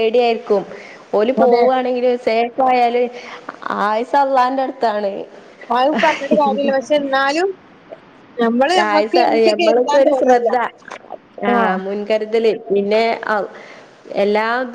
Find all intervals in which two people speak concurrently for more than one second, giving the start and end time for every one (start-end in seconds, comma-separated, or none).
8.9-10.5